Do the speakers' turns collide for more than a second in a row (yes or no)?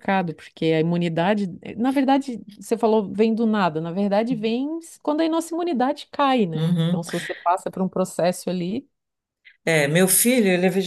no